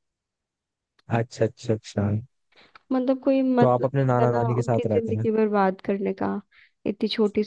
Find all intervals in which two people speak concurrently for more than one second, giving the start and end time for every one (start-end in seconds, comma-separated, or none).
3.6-5.2